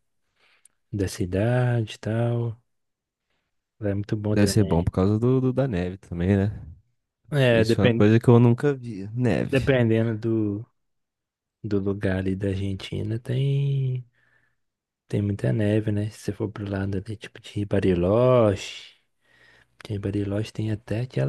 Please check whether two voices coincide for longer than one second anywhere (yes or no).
no